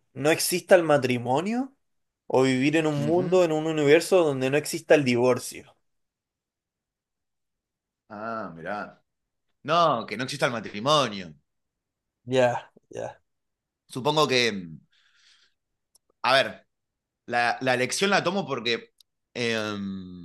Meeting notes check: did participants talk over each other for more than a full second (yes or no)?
no